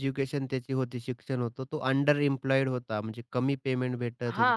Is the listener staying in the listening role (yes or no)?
no